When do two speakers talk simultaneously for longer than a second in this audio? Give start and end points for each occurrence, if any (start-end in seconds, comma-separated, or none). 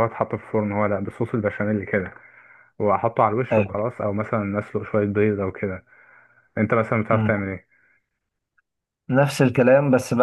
none